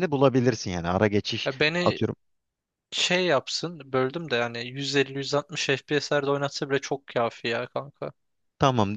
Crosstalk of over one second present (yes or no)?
no